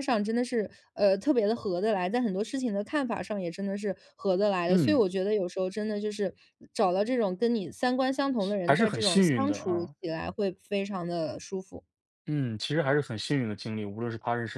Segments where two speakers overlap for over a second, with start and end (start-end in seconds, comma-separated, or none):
8.7-9.9